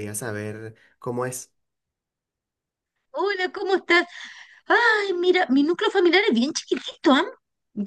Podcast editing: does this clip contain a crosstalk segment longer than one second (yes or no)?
no